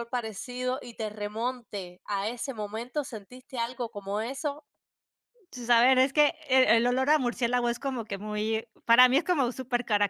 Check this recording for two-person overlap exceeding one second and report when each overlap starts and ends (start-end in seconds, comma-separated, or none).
none